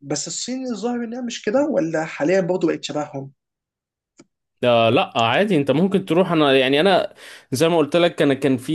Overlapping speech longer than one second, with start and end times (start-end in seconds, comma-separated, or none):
none